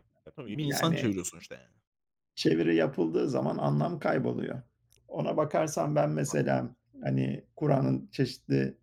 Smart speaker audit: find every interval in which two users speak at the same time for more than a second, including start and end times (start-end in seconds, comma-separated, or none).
none